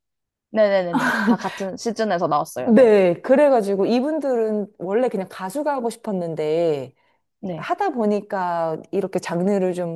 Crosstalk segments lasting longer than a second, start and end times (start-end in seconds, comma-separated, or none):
none